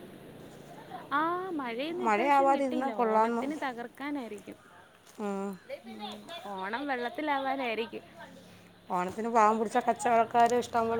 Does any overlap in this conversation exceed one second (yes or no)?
yes